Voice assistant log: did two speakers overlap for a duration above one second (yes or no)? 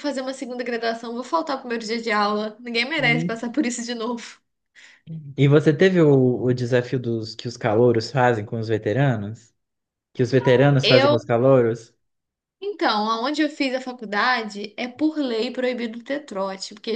no